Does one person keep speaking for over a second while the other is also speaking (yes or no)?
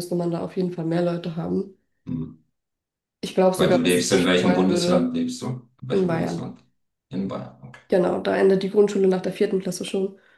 yes